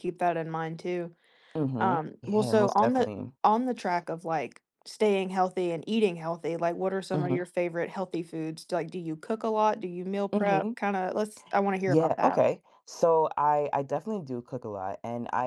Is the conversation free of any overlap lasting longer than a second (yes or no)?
no